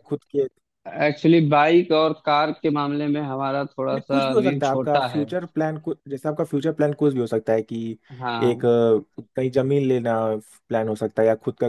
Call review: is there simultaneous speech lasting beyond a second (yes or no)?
yes